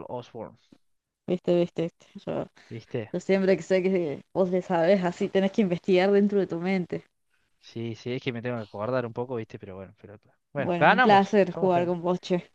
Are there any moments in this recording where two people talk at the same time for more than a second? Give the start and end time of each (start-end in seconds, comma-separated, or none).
10.6-11.9